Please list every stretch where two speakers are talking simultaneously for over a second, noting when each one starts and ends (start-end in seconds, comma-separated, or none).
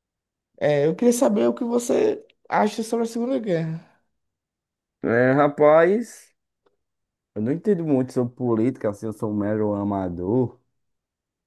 none